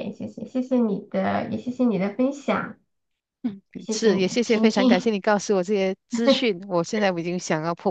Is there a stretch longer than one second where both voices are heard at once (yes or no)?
yes